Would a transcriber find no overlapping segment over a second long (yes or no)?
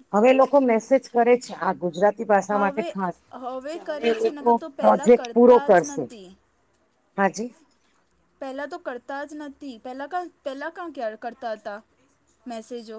no